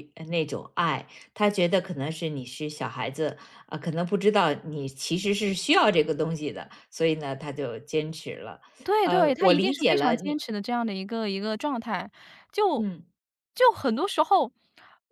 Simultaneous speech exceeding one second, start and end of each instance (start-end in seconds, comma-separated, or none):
9.0-10.3